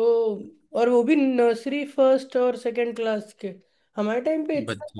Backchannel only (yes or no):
yes